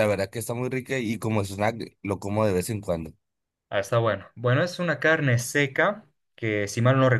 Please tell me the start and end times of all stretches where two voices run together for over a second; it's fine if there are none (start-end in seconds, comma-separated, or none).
none